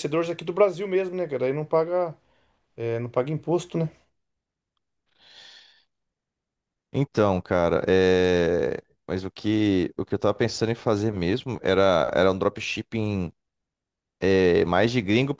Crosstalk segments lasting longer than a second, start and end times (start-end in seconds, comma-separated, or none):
none